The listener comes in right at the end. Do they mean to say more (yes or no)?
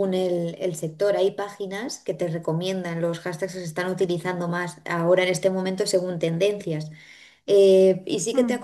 no